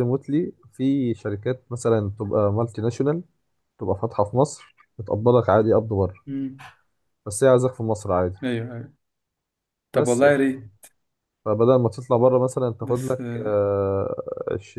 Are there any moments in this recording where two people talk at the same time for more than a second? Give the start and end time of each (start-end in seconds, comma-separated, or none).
none